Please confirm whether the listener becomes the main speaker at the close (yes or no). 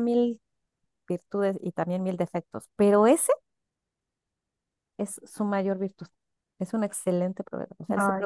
no